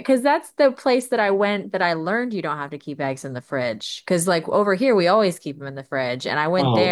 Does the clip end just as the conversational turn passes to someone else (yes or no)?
yes